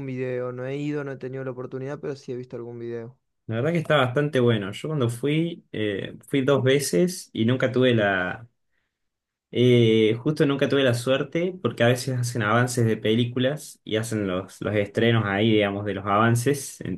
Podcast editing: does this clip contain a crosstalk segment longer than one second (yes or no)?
no